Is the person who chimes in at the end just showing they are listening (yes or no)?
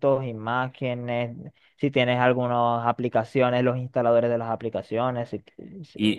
no